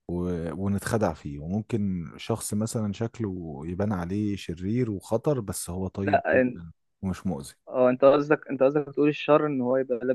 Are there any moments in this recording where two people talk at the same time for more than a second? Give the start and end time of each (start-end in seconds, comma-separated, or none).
none